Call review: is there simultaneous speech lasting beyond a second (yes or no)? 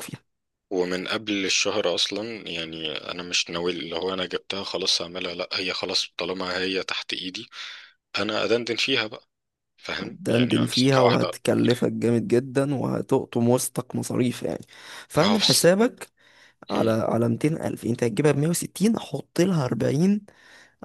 yes